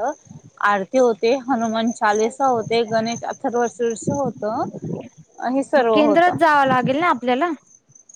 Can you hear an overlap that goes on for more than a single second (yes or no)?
no